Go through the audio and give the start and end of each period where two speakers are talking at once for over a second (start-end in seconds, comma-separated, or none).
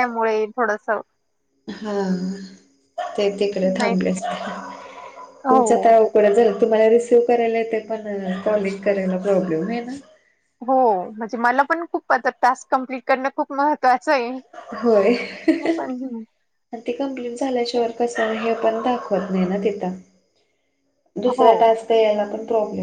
none